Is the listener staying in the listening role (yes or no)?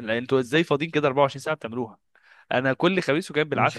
yes